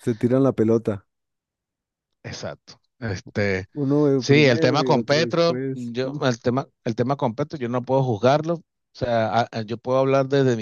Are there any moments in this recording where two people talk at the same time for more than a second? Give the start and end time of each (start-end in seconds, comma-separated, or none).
4.2-6.2